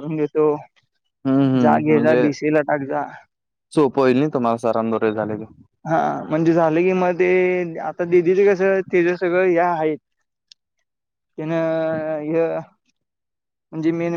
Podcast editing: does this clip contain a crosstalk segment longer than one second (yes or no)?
no